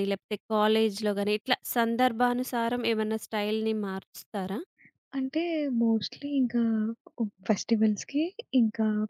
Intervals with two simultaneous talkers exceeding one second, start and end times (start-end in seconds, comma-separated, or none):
none